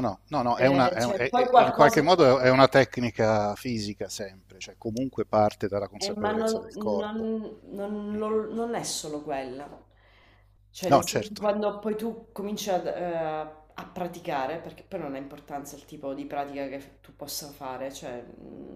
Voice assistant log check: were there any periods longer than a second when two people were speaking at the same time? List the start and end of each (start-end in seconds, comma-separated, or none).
0.6-2.0, 6.0-7.3